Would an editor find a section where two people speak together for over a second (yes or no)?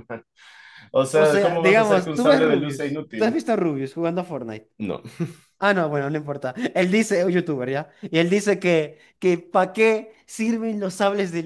yes